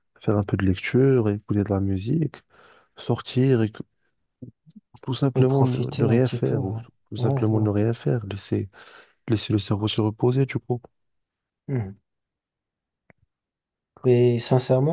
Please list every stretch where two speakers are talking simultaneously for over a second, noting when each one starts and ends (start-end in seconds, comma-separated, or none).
5.3-7.7